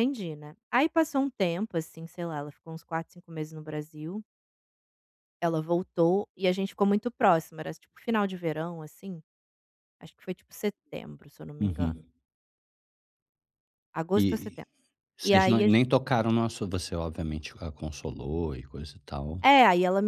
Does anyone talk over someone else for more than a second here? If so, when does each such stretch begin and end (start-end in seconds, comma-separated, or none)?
none